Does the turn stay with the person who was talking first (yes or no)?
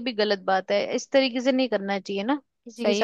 no